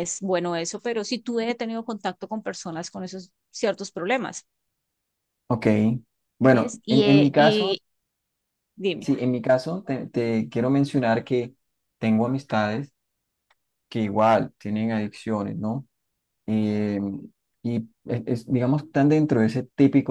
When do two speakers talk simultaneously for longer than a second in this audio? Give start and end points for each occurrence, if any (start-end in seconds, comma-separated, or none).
6.5-7.8